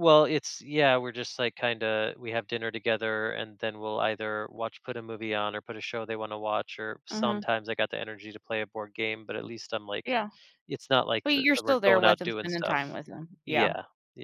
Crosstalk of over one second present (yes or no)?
yes